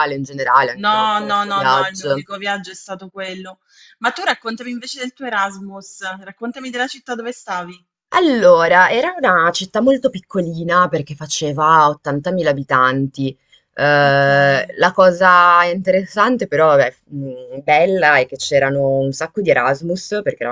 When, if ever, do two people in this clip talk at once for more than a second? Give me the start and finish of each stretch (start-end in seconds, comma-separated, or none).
0.8-2.2